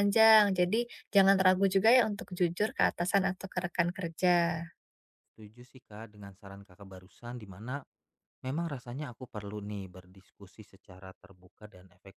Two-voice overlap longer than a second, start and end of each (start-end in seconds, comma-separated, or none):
none